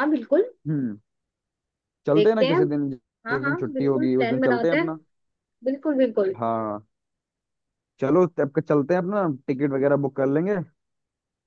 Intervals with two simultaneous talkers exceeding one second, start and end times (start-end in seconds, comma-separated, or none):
3.3-4.9